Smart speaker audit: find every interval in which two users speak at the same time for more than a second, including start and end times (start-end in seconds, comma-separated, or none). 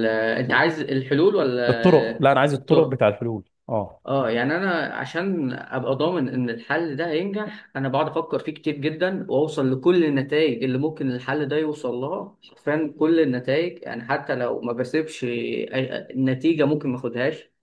1.7-3.0